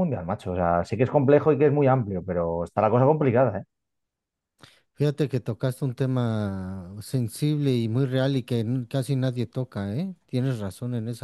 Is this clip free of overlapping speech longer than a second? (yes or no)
yes